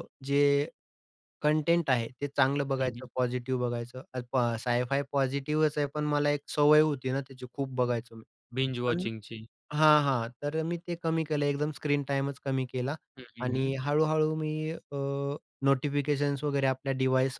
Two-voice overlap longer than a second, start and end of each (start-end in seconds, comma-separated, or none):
none